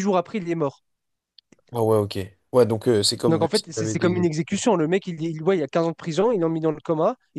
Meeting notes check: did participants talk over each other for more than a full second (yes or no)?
yes